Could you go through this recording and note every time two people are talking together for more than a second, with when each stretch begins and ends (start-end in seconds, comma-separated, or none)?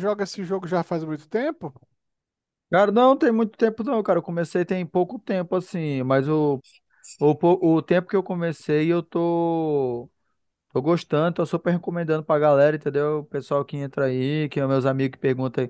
none